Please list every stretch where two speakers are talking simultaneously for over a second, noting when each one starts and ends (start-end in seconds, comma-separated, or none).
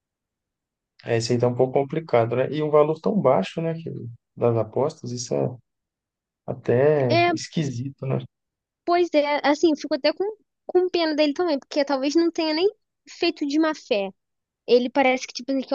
none